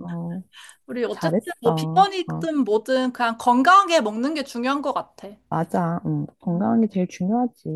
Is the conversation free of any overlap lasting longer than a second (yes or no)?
no